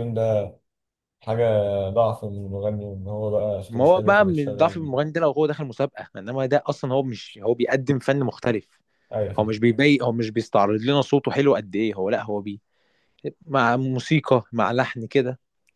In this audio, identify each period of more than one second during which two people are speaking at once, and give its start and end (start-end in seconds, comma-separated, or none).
3.7-4.9